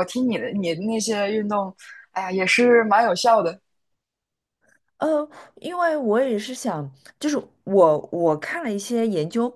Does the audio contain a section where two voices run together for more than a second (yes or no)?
no